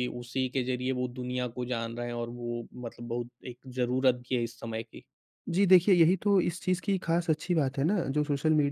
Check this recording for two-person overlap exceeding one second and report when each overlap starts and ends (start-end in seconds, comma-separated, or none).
none